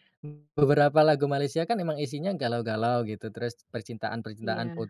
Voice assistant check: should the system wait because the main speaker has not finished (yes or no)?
yes